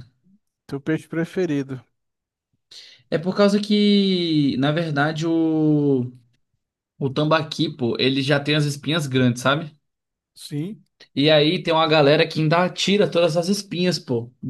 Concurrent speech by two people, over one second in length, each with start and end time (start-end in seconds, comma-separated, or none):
none